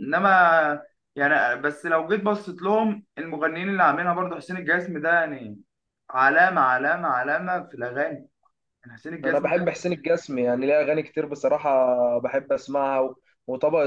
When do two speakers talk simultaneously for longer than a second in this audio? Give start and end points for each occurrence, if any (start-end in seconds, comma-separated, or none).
none